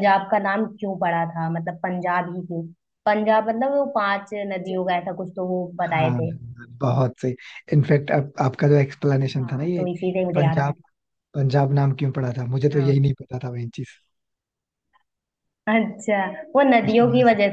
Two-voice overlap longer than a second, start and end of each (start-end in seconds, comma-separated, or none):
9.4-10.7